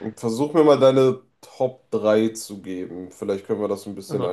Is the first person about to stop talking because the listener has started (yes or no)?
yes